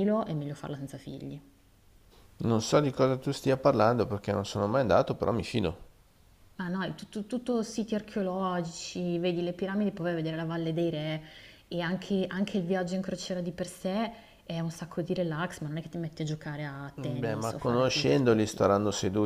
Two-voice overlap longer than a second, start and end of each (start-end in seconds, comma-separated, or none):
17.0-18.7